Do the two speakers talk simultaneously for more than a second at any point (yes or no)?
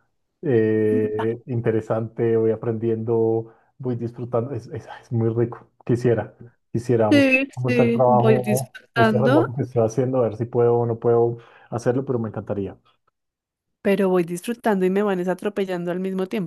yes